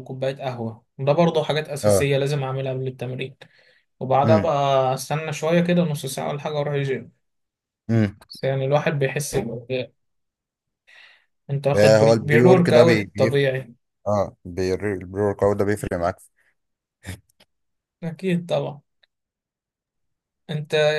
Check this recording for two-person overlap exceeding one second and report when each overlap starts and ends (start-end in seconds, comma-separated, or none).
11.7-13.4